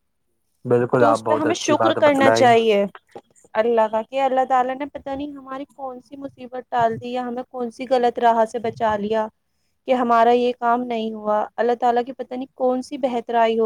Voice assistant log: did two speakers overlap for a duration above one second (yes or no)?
yes